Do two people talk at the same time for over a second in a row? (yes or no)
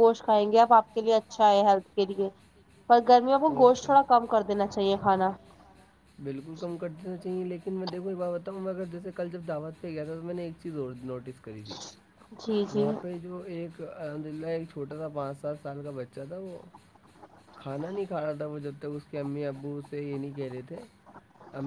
no